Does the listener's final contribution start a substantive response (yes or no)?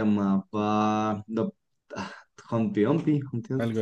yes